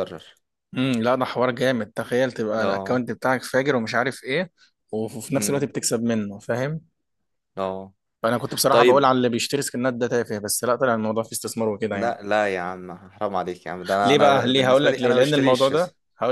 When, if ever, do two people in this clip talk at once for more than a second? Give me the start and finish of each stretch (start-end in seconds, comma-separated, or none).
14.0-15.7